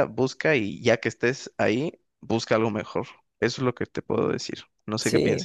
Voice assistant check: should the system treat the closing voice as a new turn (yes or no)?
yes